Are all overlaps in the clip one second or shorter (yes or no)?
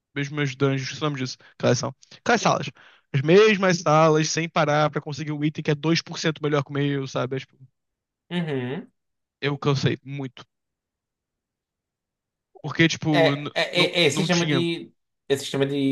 no